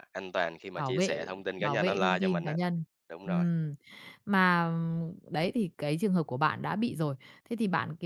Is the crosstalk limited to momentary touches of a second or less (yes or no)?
no